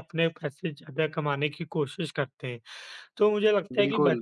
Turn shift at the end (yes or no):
no